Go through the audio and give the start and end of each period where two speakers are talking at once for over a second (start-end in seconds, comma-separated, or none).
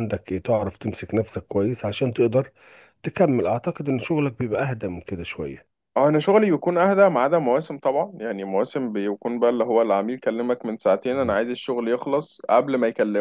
none